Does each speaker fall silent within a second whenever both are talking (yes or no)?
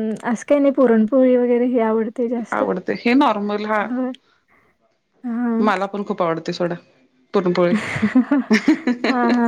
yes